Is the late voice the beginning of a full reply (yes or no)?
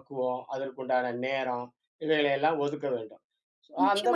yes